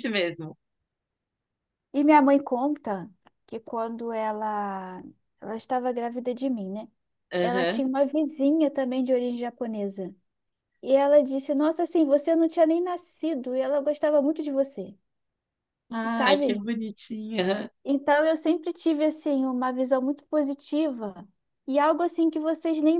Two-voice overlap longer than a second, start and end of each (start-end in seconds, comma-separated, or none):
none